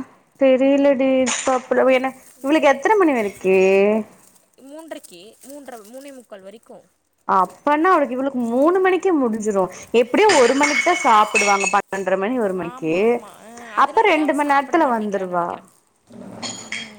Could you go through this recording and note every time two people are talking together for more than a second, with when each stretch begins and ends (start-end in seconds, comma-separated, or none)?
13.8-15.5